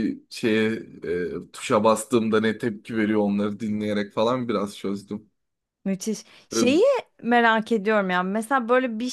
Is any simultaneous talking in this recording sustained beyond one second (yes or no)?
no